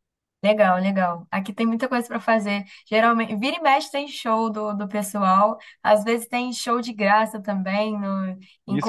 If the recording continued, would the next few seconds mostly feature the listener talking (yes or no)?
yes